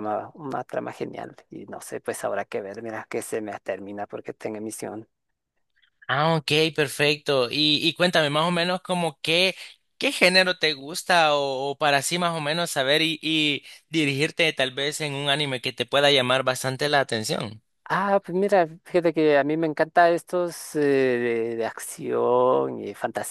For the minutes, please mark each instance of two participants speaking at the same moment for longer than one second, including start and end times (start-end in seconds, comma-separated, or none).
none